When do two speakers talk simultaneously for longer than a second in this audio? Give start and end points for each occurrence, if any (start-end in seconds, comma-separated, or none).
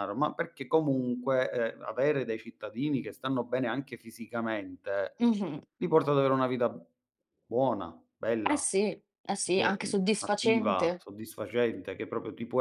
9.5-11.1